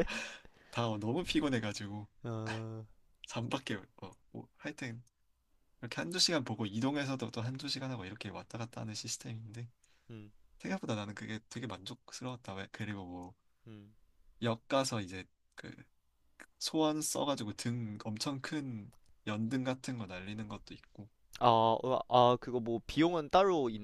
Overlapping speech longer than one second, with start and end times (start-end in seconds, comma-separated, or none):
none